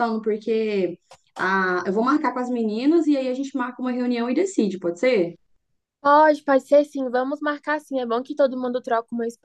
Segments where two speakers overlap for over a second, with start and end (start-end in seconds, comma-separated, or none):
none